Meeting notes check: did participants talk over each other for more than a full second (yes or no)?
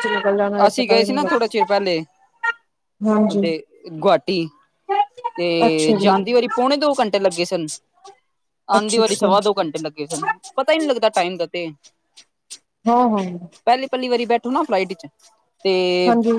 yes